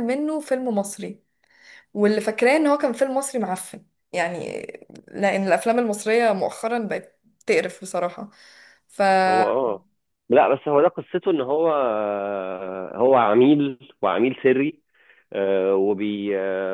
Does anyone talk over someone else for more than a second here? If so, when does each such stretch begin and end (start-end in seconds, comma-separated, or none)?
none